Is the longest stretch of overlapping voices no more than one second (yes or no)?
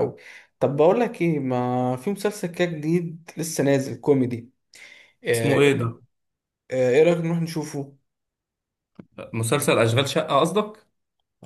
yes